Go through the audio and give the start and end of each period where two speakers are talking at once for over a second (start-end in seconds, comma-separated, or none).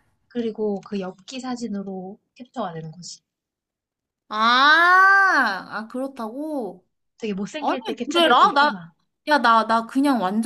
7.6-8.9